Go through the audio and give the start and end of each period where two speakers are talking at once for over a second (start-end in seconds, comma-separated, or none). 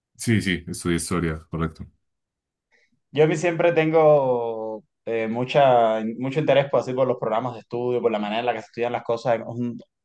none